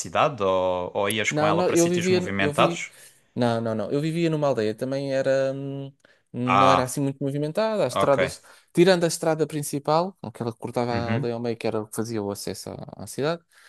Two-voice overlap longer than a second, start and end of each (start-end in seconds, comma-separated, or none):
1.3-2.8